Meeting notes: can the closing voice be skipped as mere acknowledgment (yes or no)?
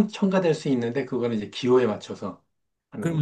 no